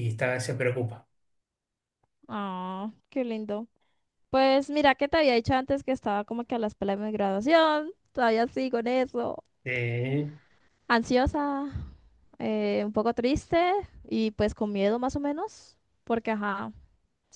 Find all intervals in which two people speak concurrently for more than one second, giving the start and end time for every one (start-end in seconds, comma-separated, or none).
none